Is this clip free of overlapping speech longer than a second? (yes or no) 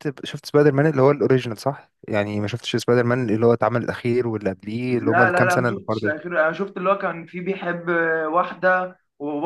no